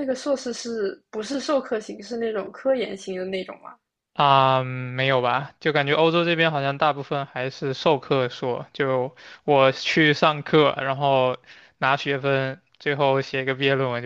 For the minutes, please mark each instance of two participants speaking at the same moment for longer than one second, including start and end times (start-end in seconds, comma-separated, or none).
none